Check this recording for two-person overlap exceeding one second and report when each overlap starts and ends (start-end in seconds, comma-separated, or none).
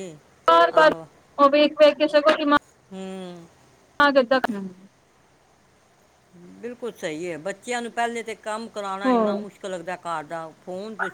none